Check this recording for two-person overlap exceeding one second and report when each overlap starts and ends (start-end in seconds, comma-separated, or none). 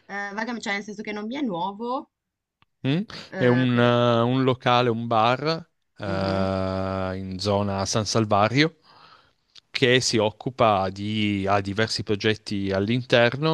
none